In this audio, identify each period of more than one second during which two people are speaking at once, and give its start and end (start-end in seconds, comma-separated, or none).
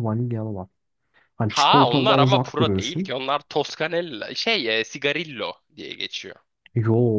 1.5-3.1